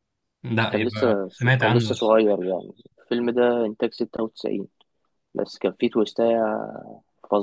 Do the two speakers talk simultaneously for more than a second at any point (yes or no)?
yes